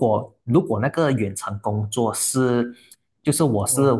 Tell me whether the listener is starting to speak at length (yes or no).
no